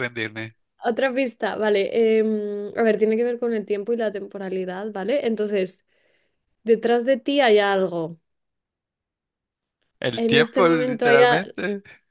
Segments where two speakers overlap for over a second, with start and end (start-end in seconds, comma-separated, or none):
10.1-11.4